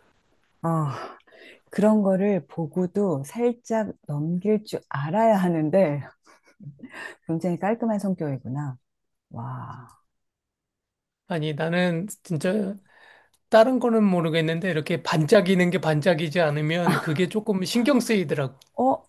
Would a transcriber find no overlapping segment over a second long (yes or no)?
yes